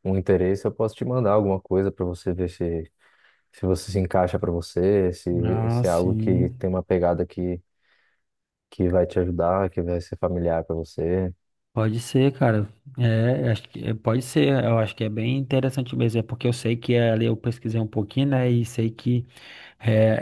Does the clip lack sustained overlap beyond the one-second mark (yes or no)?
no